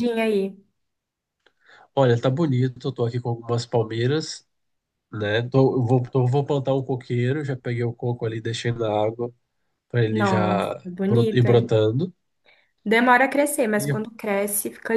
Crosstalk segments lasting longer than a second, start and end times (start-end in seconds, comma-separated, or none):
10.1-11.7